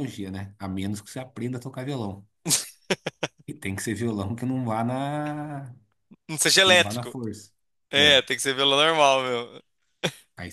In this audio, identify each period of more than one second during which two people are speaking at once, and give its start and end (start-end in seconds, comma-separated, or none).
none